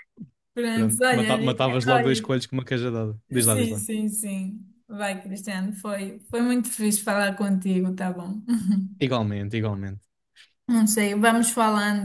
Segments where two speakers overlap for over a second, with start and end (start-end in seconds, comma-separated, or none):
0.8-2.3